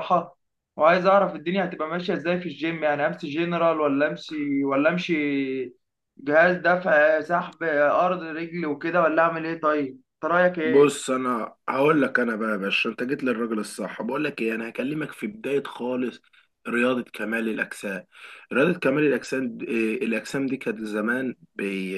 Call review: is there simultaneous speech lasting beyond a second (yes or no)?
no